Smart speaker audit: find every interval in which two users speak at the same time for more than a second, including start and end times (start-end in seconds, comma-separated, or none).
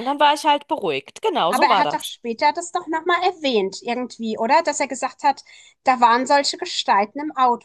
none